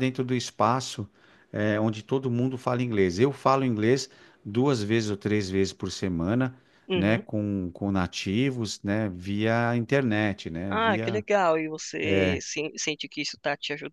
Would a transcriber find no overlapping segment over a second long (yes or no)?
yes